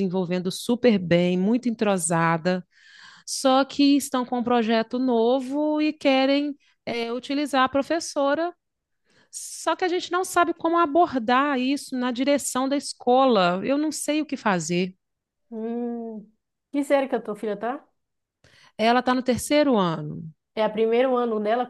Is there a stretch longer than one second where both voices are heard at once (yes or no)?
no